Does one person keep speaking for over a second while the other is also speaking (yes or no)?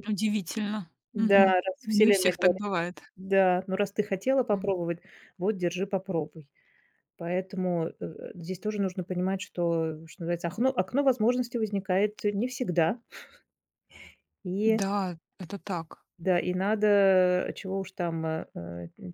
yes